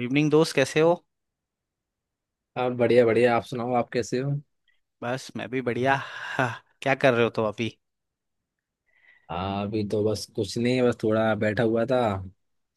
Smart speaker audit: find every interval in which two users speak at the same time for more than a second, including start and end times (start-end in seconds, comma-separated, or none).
none